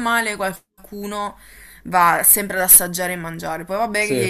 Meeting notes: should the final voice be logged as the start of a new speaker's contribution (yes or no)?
no